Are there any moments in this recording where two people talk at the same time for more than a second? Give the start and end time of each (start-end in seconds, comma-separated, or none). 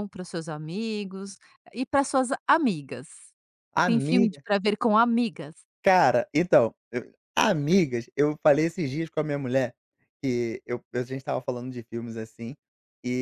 none